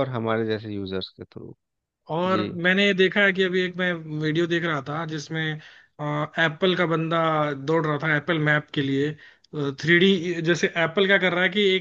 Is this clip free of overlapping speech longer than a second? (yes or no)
yes